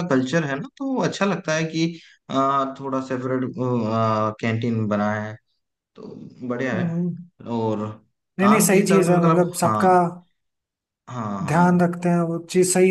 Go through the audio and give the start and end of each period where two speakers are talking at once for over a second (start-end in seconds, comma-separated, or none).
8.4-9.9